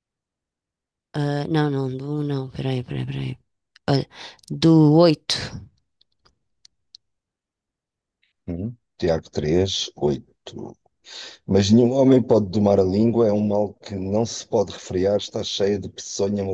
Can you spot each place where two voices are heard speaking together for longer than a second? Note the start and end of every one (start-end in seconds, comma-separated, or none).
none